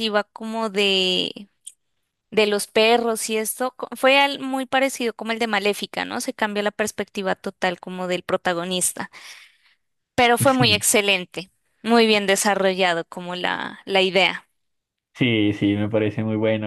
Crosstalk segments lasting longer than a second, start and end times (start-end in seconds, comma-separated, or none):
none